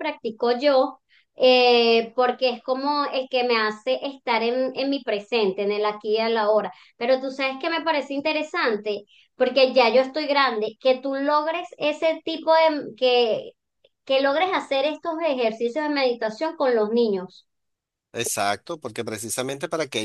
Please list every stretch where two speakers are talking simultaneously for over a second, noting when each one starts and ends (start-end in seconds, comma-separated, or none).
none